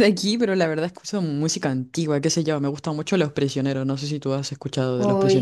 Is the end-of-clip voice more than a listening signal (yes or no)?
yes